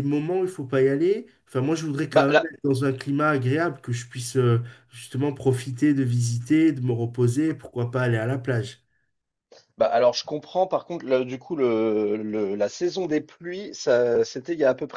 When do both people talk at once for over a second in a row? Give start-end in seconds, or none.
none